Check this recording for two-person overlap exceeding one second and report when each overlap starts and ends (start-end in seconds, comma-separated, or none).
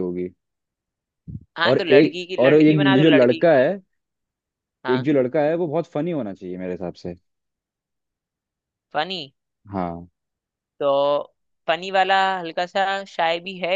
1.7-3.5